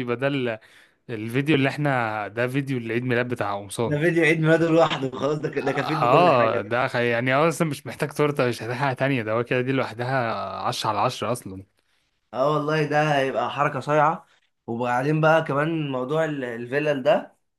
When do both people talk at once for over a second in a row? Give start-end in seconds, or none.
5.6-6.8